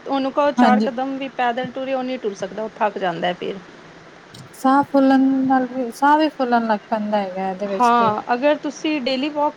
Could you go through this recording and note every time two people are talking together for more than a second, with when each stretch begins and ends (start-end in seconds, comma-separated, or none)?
none